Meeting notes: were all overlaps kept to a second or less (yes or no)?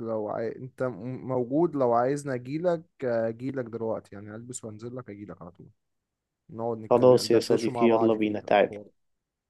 no